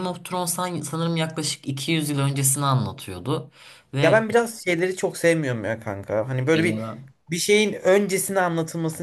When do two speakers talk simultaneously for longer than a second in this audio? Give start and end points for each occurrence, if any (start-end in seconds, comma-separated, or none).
none